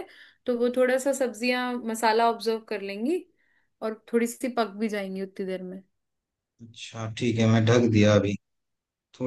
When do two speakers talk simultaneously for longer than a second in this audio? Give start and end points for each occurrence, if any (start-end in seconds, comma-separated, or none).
none